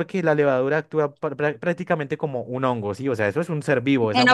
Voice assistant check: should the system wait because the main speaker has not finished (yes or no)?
yes